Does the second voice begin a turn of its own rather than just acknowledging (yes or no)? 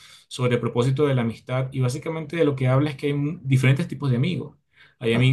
no